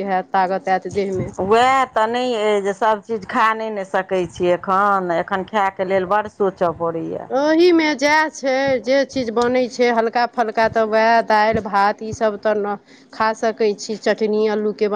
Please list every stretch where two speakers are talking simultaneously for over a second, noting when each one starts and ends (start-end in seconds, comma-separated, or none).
none